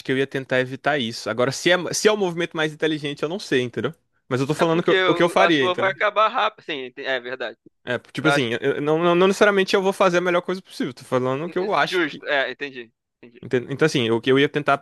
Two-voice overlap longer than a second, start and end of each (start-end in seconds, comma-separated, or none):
4.6-6.0